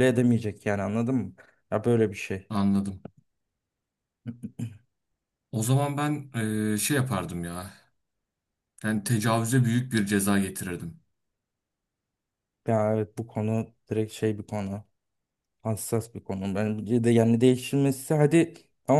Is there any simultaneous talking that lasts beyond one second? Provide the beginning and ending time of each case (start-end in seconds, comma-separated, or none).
none